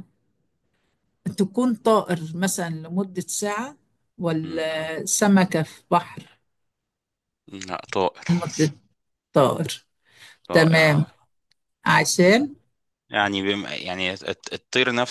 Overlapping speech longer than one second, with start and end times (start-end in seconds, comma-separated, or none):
none